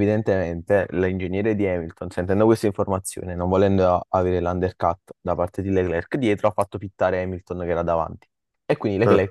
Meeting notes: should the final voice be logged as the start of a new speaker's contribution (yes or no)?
no